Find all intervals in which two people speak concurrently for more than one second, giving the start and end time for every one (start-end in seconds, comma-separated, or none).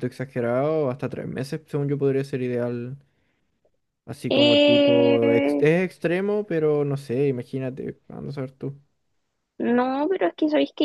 4.3-5.7